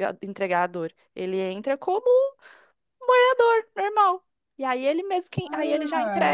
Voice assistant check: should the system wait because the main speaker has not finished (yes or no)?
yes